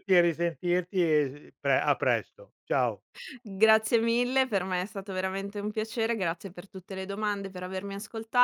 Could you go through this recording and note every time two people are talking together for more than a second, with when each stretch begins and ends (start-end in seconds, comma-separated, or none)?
none